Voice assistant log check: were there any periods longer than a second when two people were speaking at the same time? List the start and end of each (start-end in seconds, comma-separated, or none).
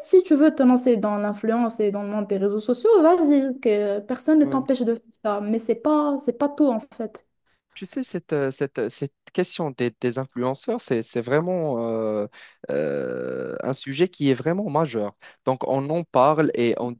none